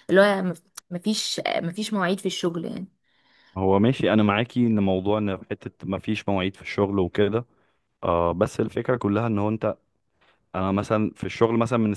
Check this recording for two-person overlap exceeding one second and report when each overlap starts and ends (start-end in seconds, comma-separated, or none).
none